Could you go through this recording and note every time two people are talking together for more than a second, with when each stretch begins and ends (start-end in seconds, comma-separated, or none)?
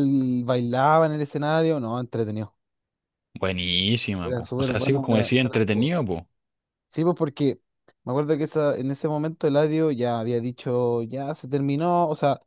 4.2-5.9